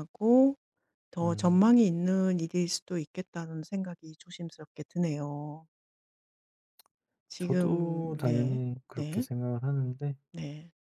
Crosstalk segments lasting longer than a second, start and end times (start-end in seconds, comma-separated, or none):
7.4-9.2